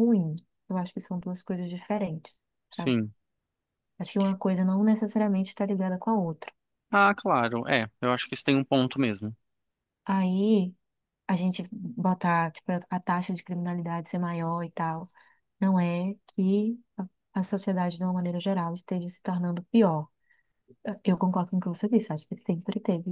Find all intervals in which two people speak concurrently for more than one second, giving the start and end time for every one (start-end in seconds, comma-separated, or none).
none